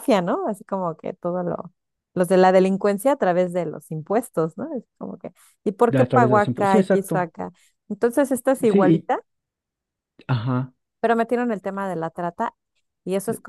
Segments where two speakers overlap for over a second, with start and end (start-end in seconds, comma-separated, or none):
5.9-7.3